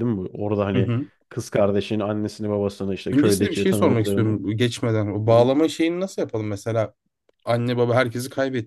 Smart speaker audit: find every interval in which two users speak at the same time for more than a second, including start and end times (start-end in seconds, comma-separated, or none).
3.1-4.3